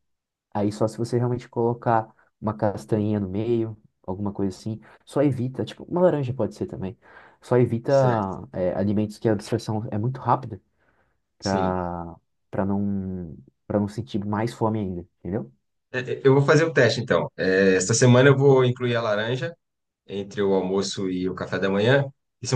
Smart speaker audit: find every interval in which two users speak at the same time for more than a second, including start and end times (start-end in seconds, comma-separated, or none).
none